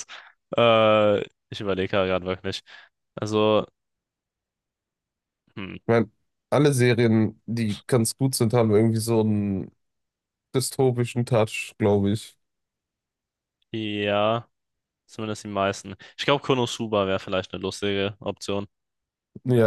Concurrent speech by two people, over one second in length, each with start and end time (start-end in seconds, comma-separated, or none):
none